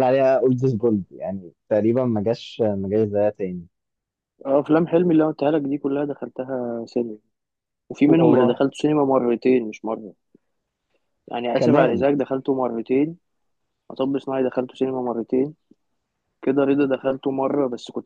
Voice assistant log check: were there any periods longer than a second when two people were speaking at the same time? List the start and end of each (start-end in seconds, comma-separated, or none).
none